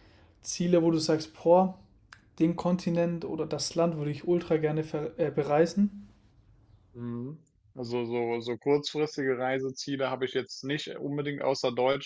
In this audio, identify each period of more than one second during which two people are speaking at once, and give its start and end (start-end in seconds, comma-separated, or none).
none